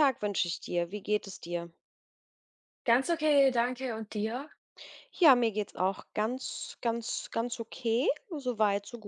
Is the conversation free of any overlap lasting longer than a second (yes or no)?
yes